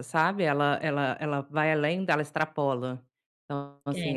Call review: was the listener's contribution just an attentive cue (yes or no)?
yes